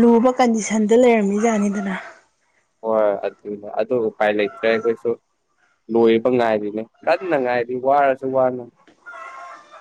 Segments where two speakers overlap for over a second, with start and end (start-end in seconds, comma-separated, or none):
none